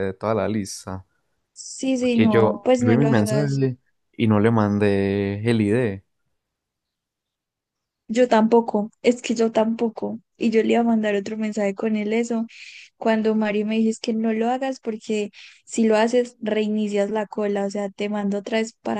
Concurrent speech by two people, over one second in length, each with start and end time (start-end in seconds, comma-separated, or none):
2.1-3.6